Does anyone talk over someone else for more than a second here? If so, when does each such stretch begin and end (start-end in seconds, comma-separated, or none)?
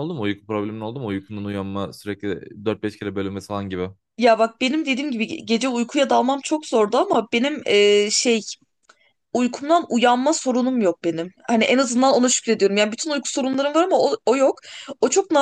none